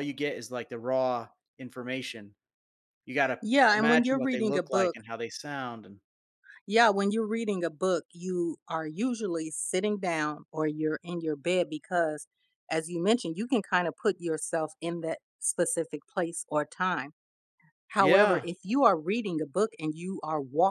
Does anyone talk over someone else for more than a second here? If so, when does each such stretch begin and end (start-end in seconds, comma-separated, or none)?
3.4-5.0